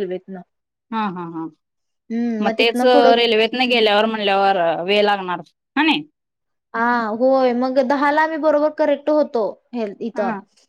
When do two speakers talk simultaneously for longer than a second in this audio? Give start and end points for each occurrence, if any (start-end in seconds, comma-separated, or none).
none